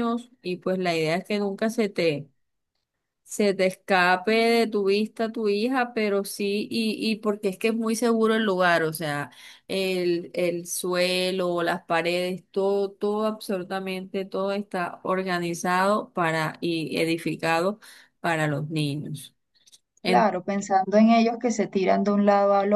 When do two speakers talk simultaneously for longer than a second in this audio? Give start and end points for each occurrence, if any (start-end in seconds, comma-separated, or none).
none